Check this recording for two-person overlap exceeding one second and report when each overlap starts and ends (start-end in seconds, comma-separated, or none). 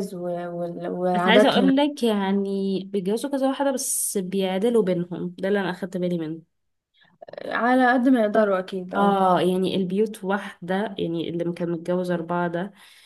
none